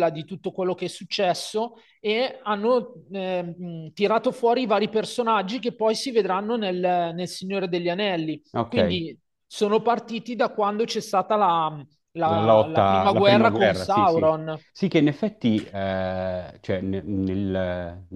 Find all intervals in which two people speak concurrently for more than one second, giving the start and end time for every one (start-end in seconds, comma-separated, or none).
12.2-14.3